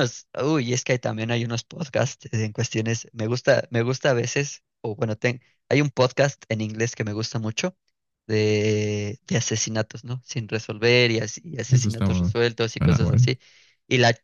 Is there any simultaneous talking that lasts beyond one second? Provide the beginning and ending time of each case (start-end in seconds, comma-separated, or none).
11.7-13.3